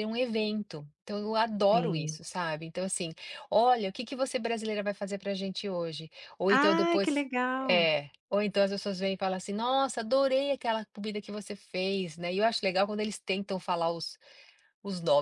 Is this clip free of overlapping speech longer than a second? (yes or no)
no